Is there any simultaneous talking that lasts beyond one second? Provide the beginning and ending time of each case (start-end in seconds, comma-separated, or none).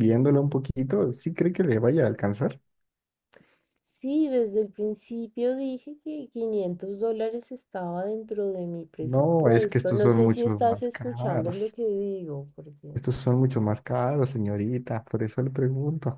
9.0-11.8